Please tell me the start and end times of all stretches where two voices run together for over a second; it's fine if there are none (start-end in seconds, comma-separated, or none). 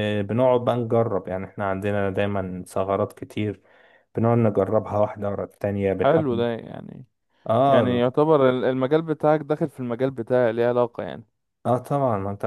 none